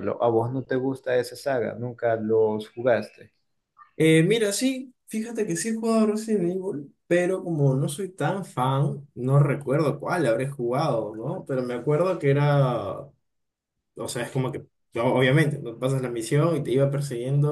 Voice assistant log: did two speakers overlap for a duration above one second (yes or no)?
no